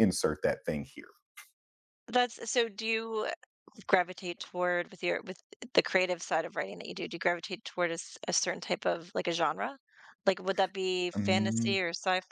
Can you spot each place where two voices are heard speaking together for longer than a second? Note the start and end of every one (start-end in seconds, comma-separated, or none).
none